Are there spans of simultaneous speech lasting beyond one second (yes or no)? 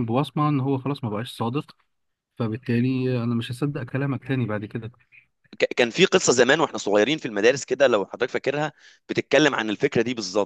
no